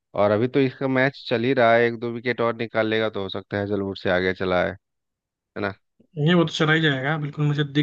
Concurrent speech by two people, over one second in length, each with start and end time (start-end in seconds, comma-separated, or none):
none